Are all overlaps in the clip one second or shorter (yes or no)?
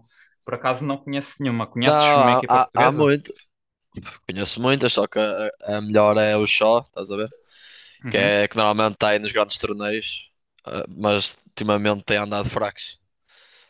no